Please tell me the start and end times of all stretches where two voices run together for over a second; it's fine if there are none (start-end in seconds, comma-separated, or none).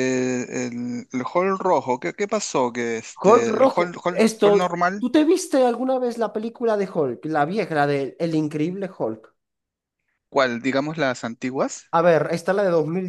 3.2-5.1